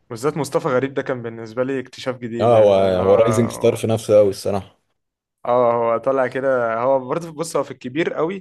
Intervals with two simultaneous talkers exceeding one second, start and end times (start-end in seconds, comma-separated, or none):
2.4-3.8